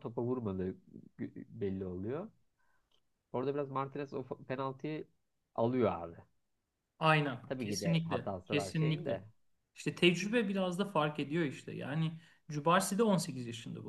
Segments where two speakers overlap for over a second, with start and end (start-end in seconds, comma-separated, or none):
7.5-9.2